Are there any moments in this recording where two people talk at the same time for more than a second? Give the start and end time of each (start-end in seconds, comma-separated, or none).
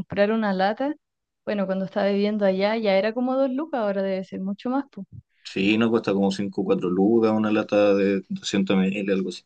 none